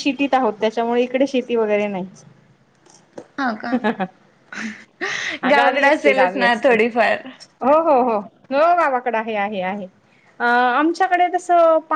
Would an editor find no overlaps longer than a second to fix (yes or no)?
no